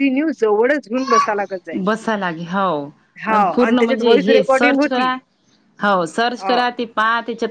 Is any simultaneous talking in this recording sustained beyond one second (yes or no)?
yes